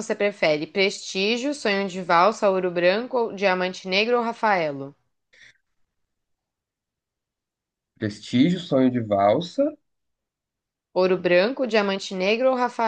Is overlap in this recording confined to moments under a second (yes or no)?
yes